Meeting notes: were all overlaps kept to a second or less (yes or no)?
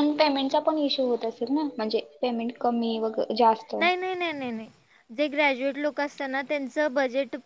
yes